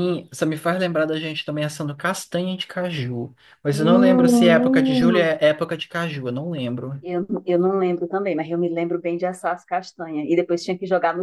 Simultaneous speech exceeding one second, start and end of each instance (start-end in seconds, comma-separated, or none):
3.7-5.2